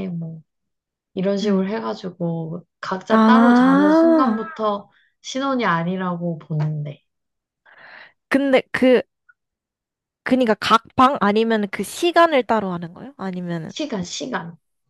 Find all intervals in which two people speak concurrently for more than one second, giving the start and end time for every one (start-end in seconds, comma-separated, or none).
3.1-4.4